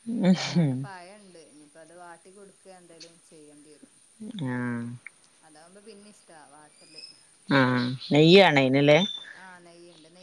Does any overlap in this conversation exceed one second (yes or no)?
no